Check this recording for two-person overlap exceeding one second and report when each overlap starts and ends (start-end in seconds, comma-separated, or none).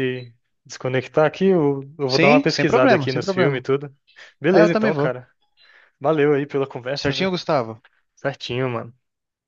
2.1-3.6